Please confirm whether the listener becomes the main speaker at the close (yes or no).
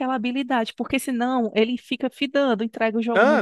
yes